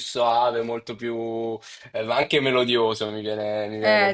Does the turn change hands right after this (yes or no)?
yes